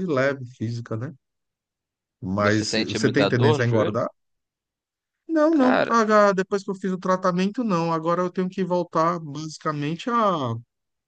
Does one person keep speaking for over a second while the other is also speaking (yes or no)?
yes